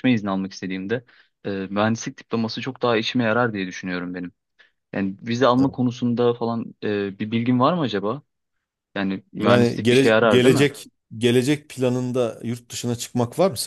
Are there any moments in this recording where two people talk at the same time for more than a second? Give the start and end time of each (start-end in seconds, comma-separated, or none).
9.3-10.7